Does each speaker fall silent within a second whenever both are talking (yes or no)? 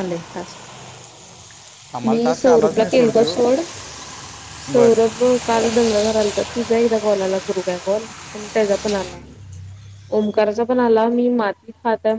no